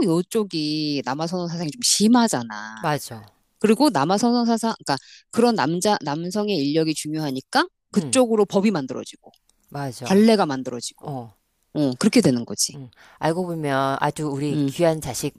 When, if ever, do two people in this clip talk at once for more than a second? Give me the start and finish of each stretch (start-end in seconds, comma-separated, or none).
none